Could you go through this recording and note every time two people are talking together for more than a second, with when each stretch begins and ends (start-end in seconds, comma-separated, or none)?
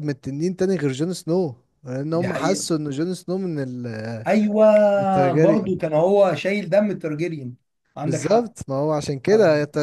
none